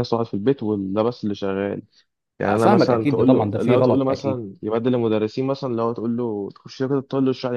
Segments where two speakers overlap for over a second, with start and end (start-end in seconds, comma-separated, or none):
2.6-4.4